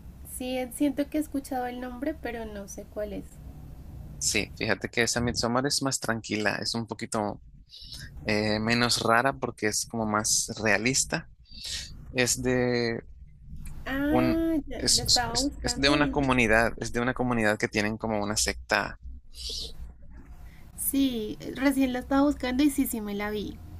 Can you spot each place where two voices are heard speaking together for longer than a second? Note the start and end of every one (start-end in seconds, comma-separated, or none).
14.1-16.3